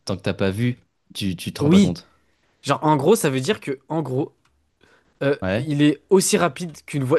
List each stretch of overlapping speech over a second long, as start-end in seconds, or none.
none